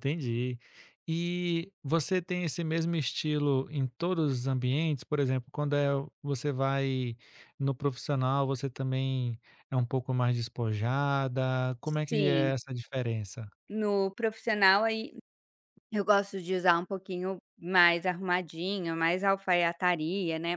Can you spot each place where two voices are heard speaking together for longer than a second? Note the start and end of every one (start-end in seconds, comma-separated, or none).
none